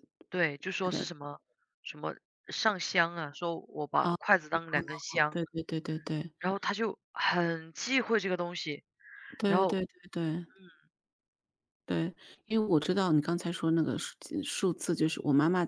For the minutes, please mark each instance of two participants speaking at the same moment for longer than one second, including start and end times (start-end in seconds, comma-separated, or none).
none